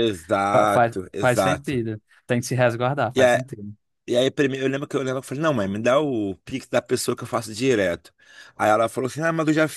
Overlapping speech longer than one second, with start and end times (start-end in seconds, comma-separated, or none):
0.5-1.8